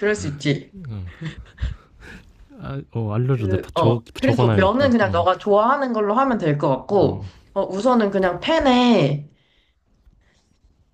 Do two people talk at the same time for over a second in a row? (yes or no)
yes